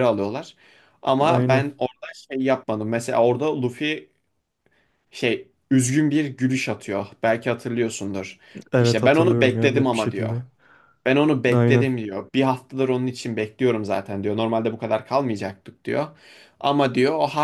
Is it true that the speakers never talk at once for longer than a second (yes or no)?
no